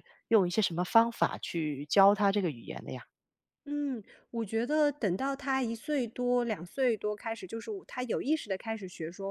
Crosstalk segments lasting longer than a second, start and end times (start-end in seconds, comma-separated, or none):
none